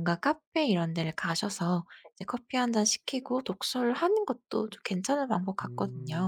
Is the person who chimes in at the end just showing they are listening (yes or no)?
no